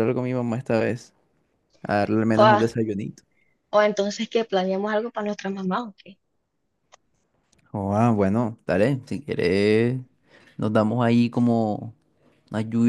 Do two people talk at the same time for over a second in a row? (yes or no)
no